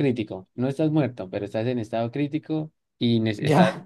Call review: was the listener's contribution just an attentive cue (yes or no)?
yes